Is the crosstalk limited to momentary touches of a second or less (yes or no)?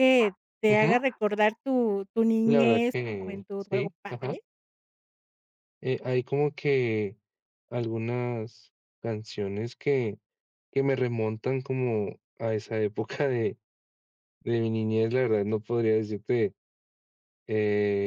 no